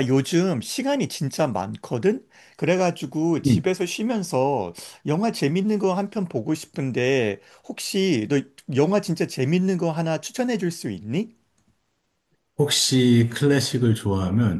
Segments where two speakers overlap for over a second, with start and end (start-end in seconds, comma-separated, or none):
none